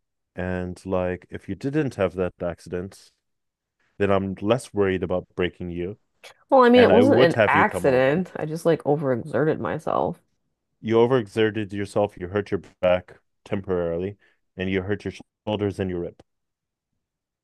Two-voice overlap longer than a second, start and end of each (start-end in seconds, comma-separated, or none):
6.7-8.2